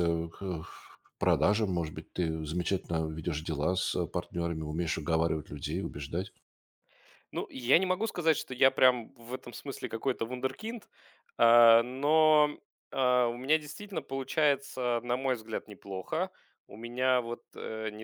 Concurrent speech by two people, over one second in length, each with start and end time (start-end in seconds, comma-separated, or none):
none